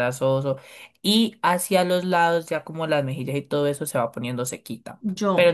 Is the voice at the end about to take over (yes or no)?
no